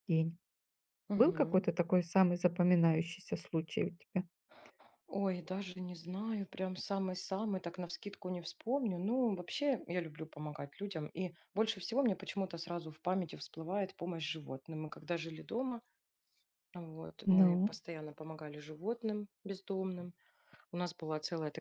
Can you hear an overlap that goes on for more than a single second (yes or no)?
no